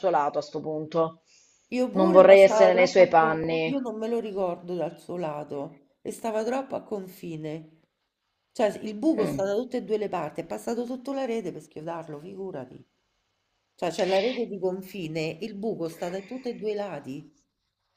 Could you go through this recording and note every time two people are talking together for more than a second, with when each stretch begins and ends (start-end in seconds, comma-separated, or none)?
1.9-3.8